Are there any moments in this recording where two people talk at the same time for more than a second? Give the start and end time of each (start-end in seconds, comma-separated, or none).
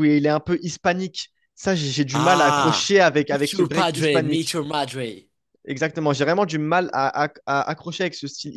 2.1-4.5